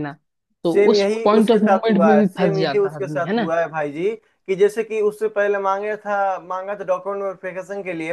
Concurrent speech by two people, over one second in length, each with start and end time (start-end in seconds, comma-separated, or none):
0.6-3.5